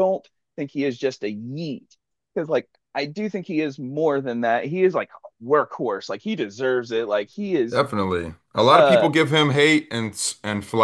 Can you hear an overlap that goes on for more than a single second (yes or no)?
no